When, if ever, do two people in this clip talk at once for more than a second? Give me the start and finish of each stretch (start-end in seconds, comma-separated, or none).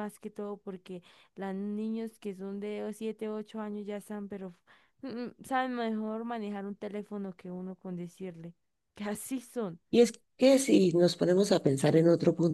none